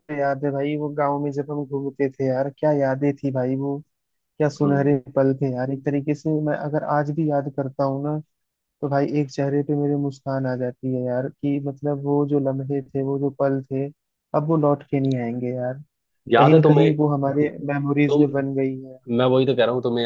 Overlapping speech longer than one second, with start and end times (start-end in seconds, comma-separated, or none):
none